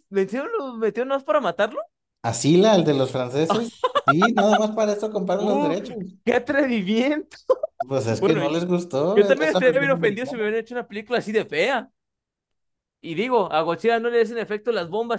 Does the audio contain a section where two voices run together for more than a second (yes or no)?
yes